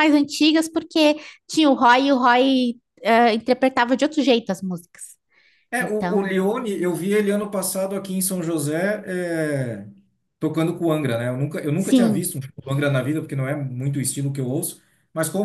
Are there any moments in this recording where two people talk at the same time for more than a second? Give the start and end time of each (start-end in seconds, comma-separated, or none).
none